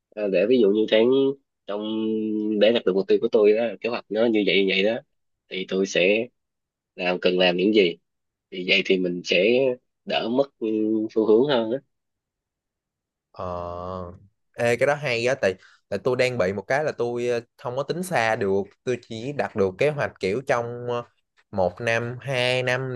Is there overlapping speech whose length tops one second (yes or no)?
no